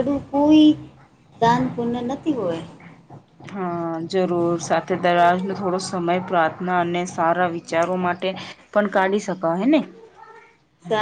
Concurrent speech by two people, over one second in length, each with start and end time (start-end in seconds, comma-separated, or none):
none